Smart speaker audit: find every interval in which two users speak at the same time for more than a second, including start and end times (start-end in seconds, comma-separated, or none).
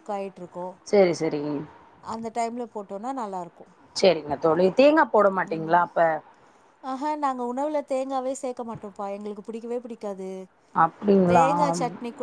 none